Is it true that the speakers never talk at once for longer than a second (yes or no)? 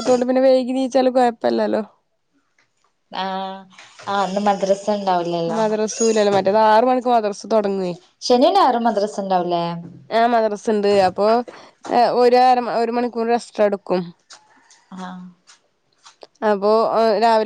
yes